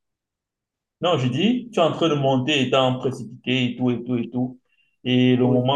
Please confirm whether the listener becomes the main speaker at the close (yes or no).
no